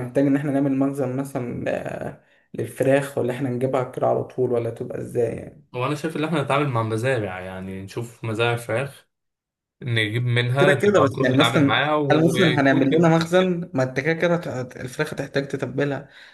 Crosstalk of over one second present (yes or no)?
yes